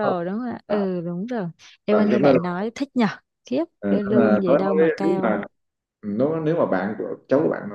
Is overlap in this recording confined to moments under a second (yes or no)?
no